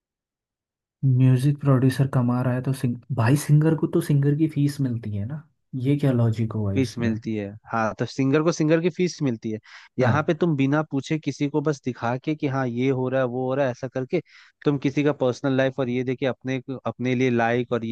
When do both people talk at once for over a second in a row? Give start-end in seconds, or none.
none